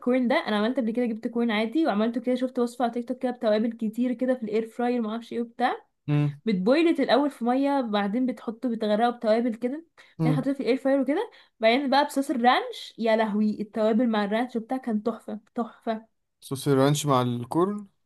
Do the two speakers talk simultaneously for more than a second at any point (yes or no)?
no